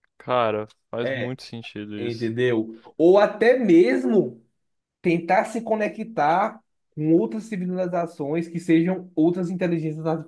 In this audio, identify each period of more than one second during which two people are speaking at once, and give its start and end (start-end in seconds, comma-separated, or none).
none